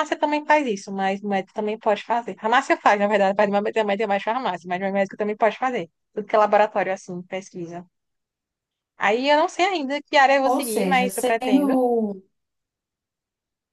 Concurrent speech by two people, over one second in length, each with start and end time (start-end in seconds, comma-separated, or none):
10.4-11.7